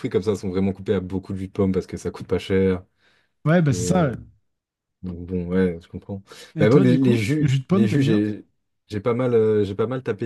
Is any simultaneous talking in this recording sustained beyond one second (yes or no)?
yes